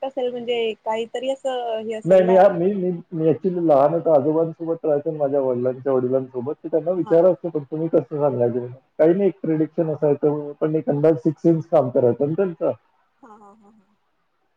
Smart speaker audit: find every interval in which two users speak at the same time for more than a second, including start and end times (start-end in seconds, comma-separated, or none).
none